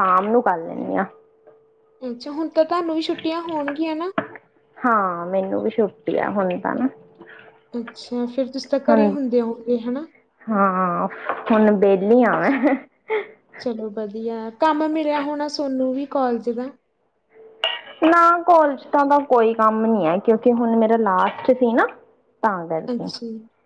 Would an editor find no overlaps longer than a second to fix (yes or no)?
yes